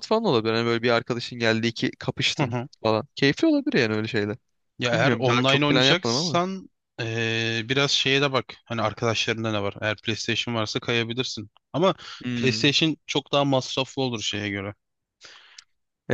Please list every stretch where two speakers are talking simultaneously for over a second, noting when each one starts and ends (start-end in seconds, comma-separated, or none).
4.9-6.4